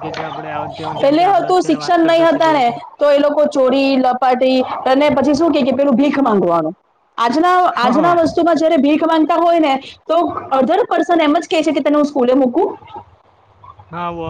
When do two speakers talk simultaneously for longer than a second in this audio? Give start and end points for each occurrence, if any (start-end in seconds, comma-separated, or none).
1.0-2.7